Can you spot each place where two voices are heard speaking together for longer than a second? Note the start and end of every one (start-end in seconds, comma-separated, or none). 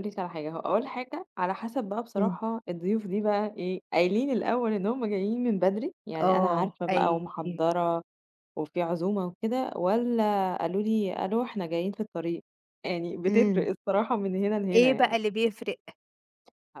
6.2-7.6